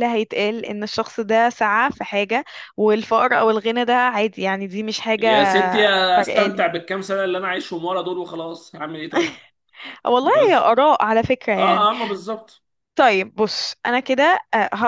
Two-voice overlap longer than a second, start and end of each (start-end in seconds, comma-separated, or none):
none